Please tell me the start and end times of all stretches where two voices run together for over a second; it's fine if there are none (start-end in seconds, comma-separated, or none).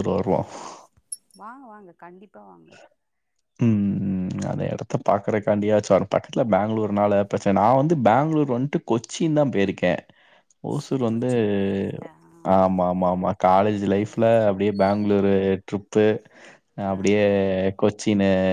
12.6-14.2